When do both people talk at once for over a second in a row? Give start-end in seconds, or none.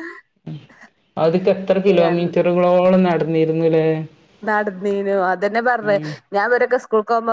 none